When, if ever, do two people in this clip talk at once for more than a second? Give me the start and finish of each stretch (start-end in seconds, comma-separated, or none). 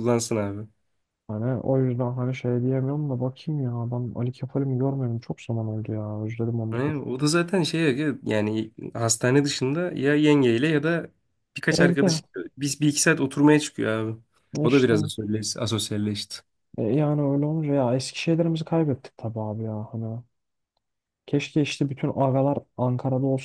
none